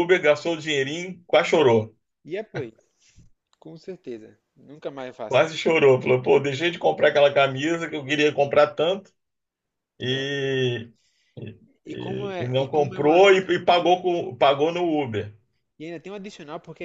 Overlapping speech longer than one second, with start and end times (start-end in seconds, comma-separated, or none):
11.8-13.2